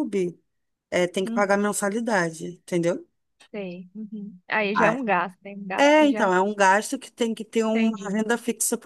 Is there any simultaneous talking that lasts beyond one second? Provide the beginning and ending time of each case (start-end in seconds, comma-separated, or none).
none